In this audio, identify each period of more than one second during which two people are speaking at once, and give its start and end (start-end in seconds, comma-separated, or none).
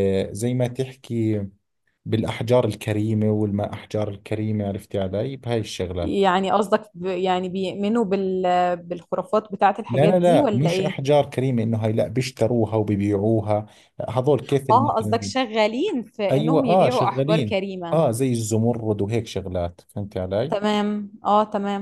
9.9-11.1, 16.3-18.0